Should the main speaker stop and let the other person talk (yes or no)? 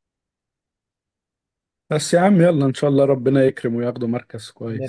yes